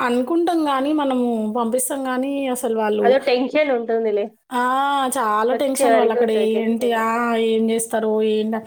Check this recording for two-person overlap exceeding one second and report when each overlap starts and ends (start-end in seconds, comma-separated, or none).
none